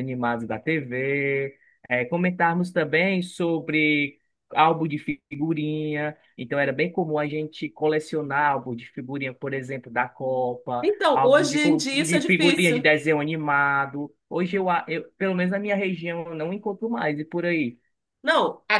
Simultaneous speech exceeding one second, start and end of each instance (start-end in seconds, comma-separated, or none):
10.8-12.8